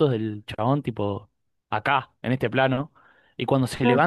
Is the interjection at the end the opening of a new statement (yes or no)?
no